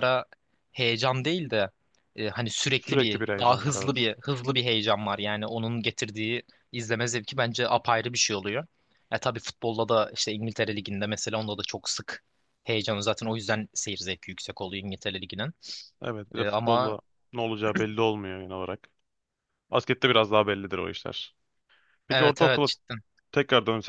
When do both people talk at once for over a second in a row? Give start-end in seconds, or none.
2.7-4.1